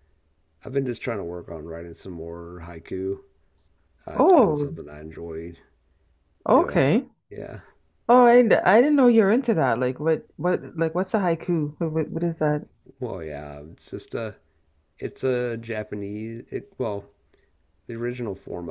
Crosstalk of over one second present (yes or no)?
no